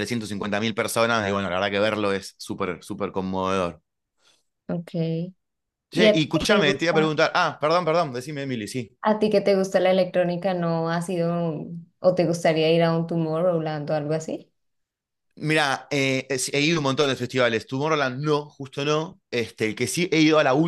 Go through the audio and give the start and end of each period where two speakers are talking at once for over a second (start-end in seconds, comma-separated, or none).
5.9-7.2